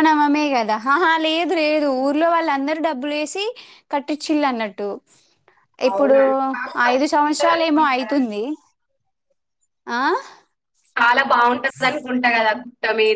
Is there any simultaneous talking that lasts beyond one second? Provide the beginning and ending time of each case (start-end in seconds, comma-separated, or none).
6.9-8.3